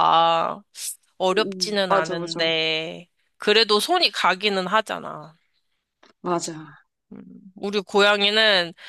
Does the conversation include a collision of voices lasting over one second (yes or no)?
yes